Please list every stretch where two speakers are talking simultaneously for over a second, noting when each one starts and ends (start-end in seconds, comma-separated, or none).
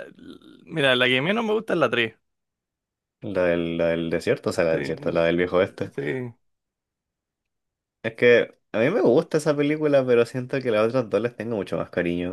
4.7-5.9